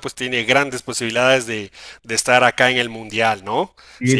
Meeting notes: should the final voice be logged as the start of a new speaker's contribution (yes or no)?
yes